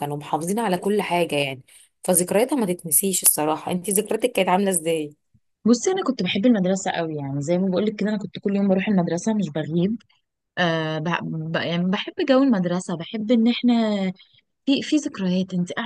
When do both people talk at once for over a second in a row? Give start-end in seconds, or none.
none